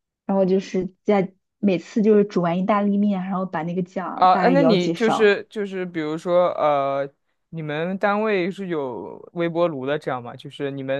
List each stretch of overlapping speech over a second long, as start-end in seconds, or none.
4.2-5.4